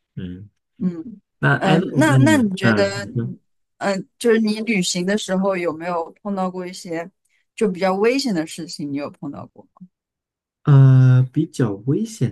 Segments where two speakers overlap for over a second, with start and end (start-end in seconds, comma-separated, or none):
1.6-3.3